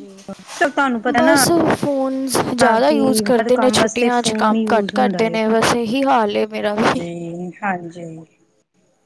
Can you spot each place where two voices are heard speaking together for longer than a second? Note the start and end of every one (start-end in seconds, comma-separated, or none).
3.4-5.4